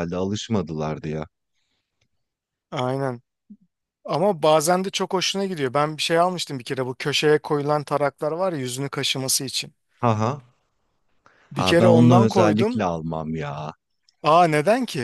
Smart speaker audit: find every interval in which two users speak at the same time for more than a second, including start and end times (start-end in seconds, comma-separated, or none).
11.5-12.8